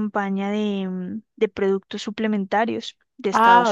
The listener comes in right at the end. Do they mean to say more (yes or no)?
yes